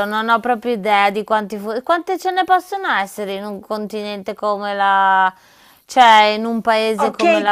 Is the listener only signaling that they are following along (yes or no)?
no